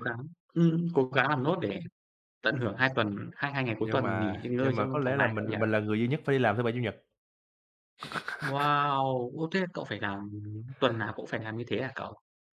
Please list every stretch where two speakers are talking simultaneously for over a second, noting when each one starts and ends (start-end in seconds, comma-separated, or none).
3.8-5.6